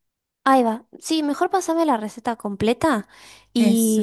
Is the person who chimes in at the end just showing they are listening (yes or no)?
yes